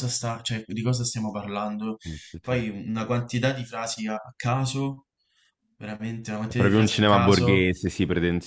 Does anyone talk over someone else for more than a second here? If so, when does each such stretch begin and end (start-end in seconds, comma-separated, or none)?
6.4-7.7